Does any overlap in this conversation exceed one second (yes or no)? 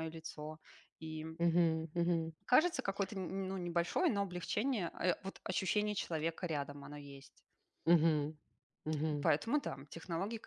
no